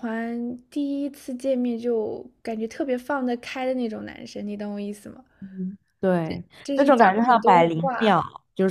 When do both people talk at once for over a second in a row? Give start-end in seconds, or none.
6.6-8.2